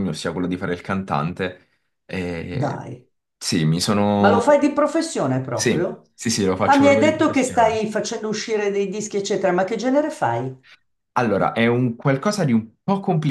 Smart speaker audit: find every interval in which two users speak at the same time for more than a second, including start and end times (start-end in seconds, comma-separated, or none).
6.6-7.8